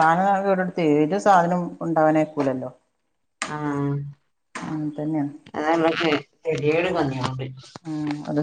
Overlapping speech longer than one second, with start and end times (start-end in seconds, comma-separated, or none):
none